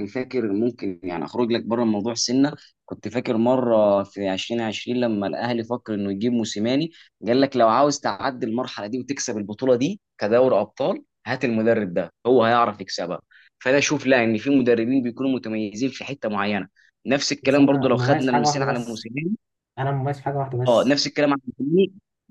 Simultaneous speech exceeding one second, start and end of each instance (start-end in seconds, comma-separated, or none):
17.4-19.1